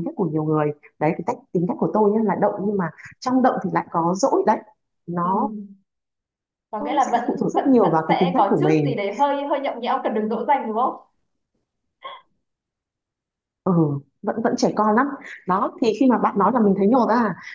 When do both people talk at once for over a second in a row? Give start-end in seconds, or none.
6.8-9.0